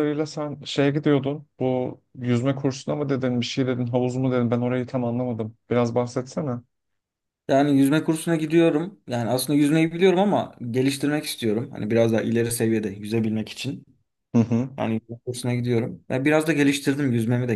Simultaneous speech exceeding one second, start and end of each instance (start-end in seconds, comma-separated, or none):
none